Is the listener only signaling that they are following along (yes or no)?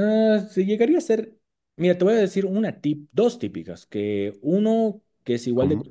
yes